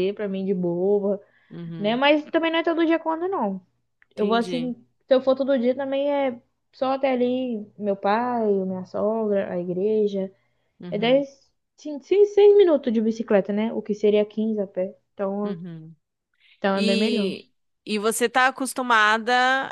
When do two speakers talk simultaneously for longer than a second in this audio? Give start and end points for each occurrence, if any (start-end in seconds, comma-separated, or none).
none